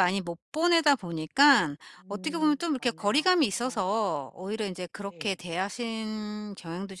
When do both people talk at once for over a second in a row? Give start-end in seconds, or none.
2.0-3.9